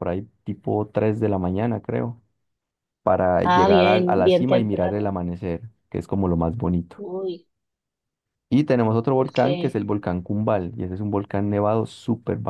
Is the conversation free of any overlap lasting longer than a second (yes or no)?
no